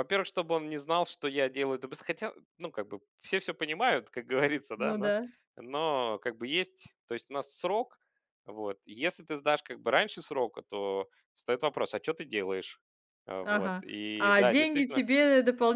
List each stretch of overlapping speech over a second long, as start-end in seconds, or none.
13.4-15.0